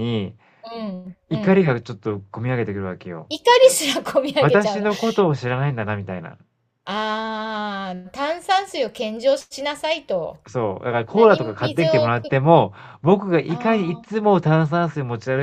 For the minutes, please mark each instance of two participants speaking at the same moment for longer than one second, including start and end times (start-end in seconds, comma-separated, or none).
11.1-12.3